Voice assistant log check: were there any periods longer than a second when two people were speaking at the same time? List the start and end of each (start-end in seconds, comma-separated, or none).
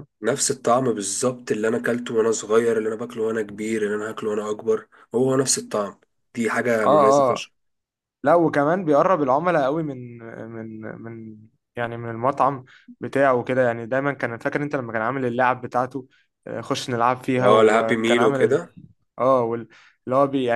17.4-18.6